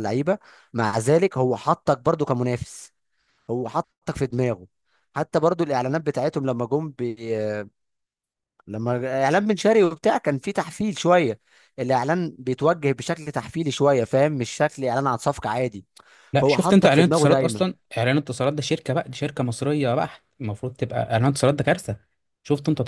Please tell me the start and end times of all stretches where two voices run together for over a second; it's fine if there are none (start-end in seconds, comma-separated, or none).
16.4-17.6